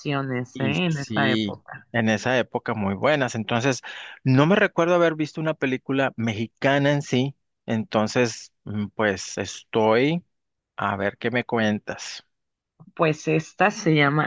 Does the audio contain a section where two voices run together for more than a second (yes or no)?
yes